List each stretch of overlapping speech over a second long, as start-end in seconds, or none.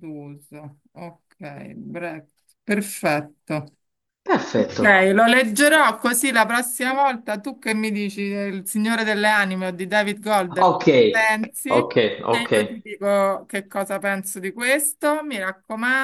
none